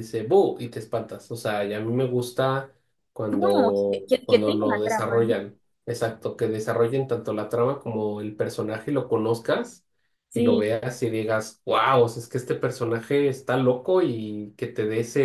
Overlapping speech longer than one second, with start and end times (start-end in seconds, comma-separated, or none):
3.4-5.3